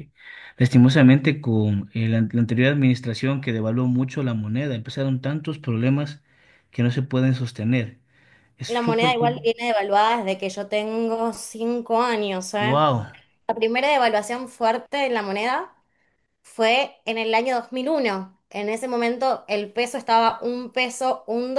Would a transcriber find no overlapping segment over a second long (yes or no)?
yes